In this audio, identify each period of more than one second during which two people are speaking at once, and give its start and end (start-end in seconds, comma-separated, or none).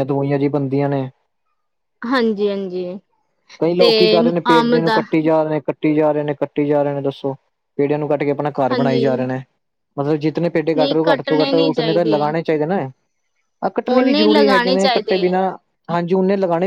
10.8-12.3, 13.9-15.3